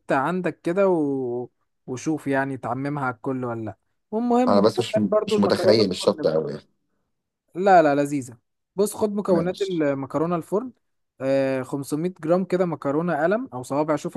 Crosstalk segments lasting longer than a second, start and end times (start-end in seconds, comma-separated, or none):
4.5-6.3